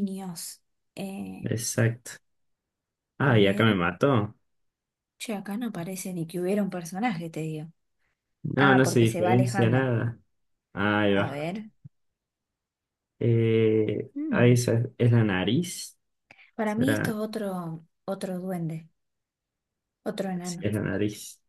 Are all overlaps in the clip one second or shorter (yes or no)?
no